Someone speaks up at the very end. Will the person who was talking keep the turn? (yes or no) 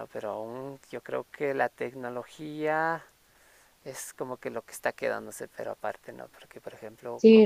no